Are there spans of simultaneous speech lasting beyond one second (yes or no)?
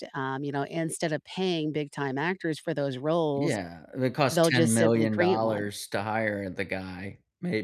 yes